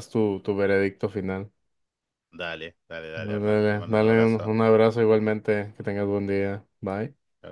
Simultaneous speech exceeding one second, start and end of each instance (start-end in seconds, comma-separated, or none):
3.1-4.5